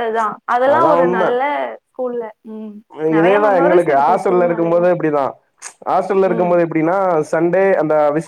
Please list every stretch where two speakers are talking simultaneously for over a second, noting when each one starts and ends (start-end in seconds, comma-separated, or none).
3.2-4.8